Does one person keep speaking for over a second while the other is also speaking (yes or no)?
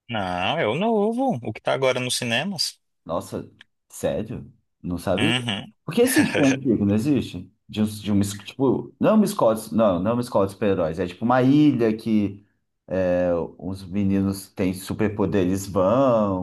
no